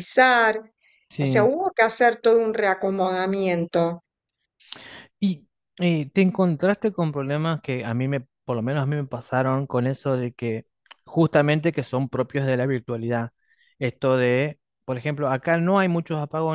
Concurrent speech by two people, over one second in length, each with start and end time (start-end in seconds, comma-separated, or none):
none